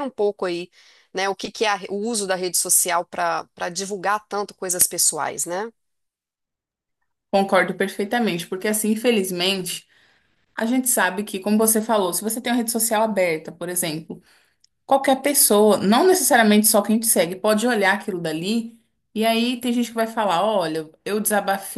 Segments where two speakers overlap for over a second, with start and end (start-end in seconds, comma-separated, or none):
none